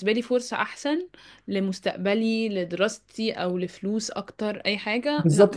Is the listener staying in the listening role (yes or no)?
no